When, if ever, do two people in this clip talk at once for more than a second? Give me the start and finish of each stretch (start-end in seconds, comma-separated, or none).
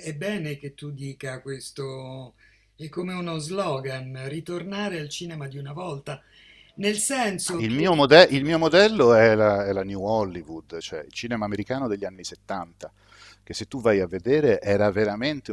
none